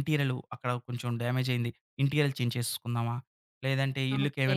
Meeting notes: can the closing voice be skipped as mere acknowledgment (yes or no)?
yes